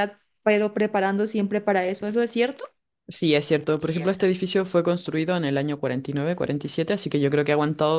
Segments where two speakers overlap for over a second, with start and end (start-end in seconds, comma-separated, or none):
none